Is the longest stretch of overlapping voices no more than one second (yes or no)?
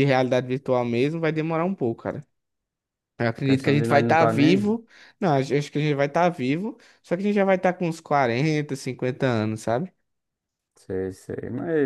no